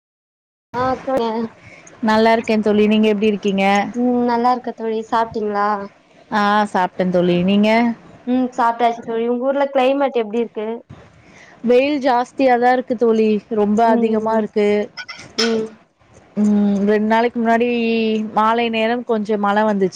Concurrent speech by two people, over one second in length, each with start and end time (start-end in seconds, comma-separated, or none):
none